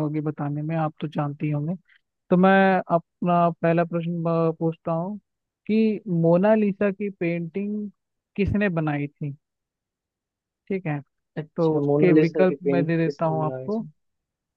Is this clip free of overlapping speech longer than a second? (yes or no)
no